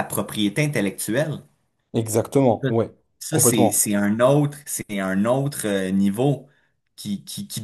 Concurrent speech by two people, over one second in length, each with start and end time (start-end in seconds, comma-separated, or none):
none